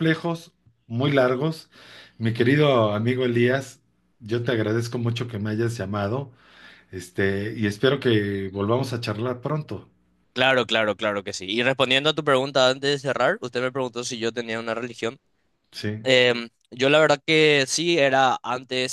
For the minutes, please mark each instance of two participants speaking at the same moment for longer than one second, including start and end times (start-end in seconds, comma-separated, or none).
none